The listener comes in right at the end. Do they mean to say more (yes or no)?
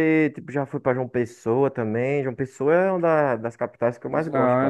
yes